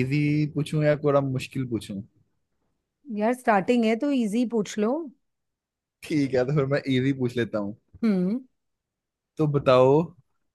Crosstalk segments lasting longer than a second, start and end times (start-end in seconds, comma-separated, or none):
none